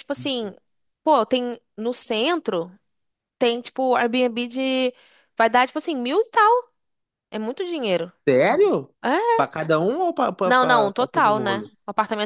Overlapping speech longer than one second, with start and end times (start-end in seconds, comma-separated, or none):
10.4-11.7